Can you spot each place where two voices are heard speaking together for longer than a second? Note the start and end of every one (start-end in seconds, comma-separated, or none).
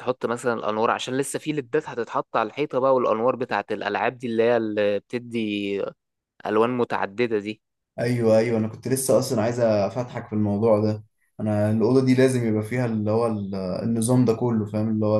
none